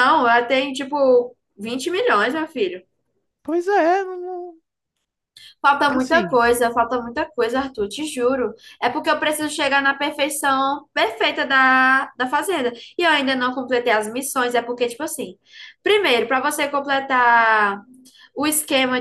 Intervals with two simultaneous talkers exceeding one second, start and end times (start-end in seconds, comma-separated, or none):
none